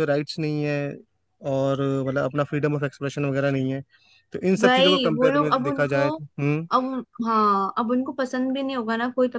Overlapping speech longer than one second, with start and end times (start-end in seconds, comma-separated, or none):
4.6-6.1